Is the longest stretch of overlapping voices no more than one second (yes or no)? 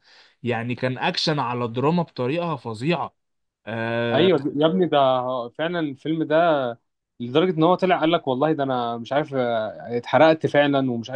yes